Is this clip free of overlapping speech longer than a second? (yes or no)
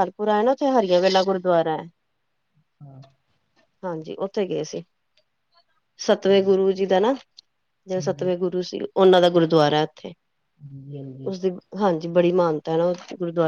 yes